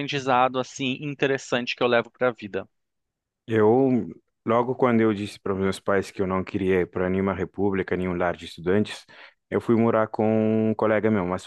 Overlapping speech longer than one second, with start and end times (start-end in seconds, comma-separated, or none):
none